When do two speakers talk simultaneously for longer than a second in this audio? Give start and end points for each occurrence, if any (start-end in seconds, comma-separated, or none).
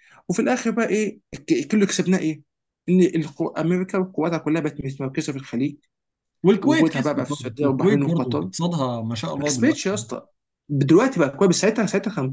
6.6-8.4